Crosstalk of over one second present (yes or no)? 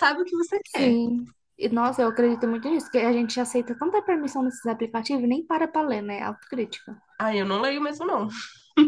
no